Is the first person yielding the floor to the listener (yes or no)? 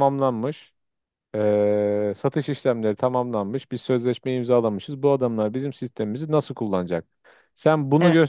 no